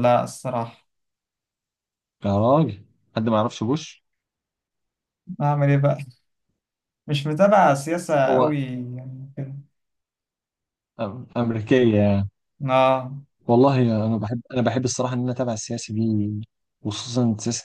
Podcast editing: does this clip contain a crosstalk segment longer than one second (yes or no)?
no